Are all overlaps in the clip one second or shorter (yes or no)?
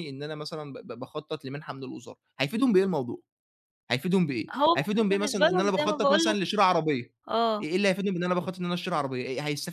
no